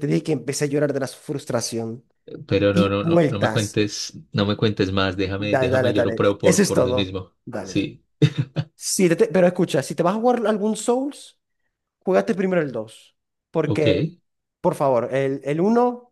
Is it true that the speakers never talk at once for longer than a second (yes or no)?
no